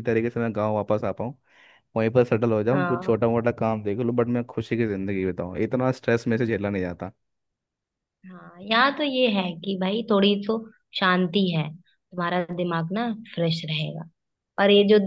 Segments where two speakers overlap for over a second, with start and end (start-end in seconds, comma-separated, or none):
none